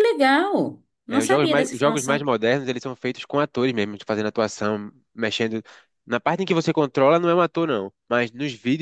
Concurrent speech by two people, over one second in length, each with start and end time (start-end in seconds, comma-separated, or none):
1.1-2.3